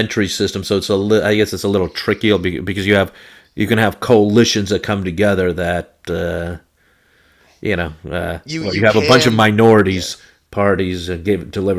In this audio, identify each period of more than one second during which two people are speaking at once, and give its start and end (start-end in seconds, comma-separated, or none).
8.4-10.1